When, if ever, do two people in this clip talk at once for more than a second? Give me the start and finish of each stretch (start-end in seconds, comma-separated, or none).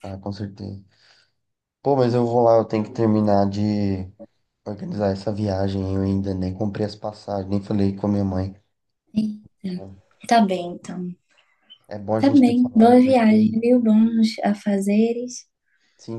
12.2-13.6